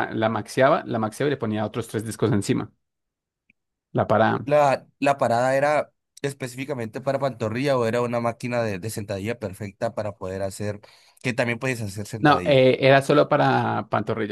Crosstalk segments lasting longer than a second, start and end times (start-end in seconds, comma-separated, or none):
none